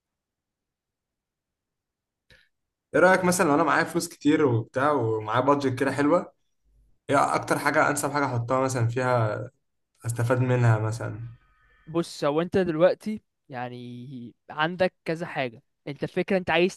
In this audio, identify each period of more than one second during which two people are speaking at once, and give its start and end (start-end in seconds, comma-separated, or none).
none